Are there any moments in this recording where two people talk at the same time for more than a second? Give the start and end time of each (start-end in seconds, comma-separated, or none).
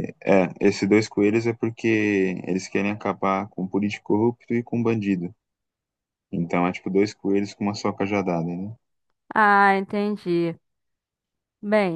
none